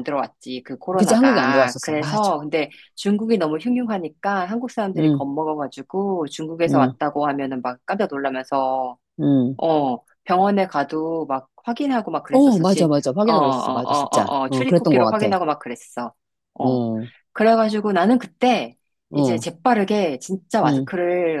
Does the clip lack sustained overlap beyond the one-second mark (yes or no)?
no